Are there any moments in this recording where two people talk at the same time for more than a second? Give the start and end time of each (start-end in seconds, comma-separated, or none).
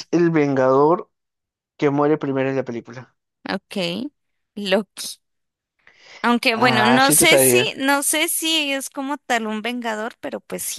6.5-7.7